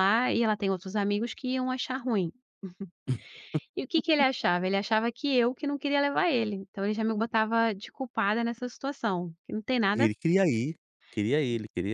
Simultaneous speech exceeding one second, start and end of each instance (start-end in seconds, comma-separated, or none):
none